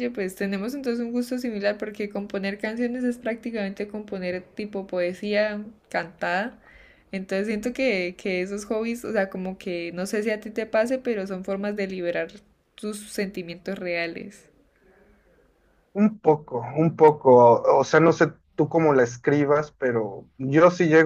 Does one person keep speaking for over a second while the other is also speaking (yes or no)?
no